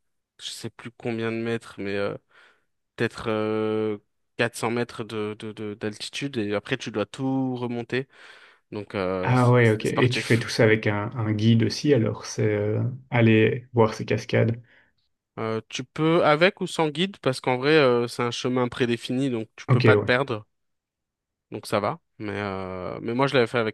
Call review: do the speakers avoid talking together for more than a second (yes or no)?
no